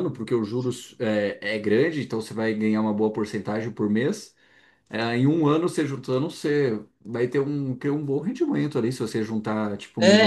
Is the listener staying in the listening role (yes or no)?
no